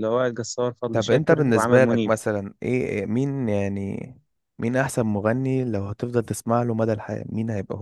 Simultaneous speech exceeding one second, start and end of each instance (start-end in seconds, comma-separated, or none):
0.9-2.1